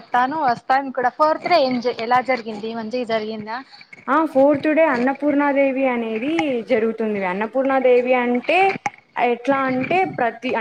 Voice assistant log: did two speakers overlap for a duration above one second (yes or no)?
no